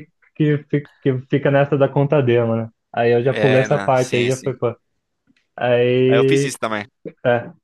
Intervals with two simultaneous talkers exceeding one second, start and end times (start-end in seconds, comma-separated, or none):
3.3-4.5